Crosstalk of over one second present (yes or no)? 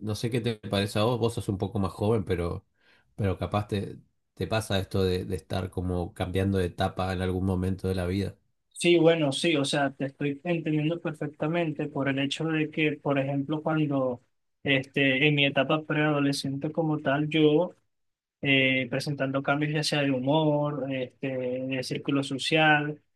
no